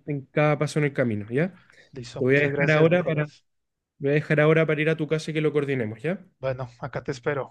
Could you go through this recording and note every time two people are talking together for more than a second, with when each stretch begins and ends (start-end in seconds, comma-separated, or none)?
2.0-3.3